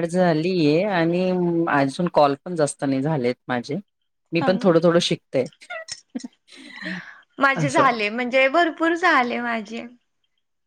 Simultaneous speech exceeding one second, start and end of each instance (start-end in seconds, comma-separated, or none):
none